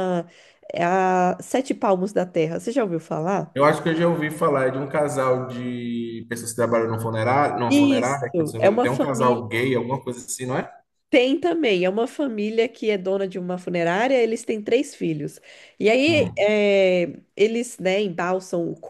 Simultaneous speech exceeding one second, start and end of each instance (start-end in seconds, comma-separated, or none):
7.7-9.4